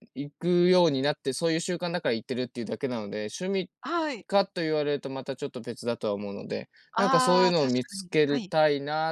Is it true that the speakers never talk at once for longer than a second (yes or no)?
no